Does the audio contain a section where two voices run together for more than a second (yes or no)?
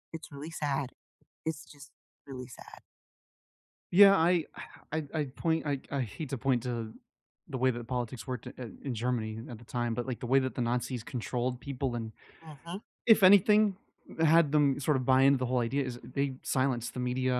no